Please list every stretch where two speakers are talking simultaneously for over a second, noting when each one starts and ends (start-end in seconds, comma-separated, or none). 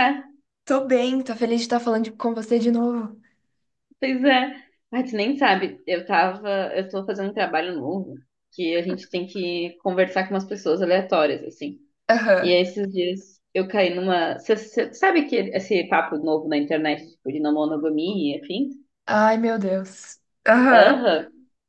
none